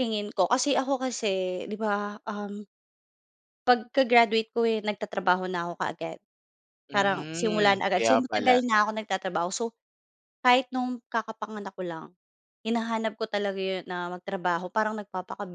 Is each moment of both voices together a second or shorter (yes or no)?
no